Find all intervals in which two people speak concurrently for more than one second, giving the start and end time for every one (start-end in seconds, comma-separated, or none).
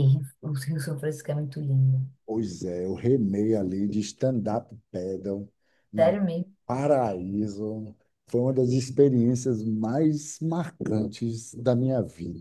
none